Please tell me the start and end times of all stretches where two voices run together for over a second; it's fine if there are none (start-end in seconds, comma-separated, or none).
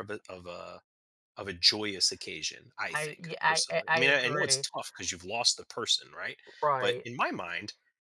2.9-4.7